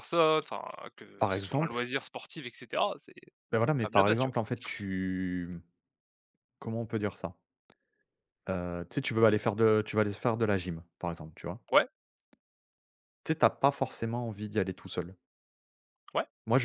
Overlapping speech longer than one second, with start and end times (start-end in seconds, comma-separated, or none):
none